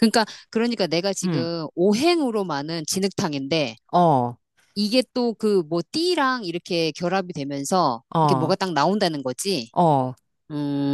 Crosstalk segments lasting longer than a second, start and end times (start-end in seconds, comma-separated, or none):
none